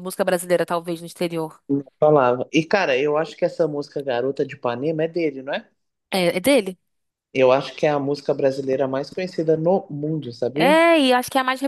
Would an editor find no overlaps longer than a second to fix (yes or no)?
yes